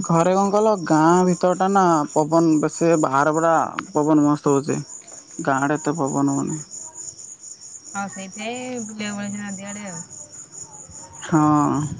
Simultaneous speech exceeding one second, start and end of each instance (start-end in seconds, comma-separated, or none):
none